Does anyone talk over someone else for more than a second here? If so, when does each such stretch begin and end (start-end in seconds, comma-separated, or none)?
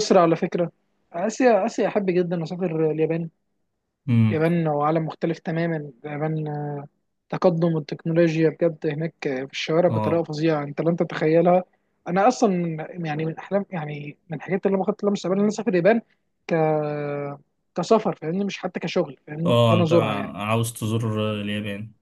none